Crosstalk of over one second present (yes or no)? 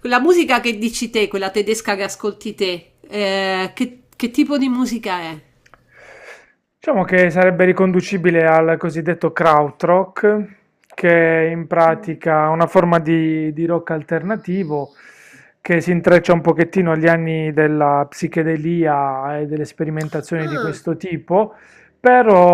no